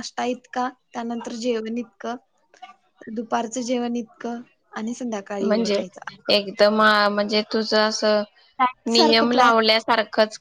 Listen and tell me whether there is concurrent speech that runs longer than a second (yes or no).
no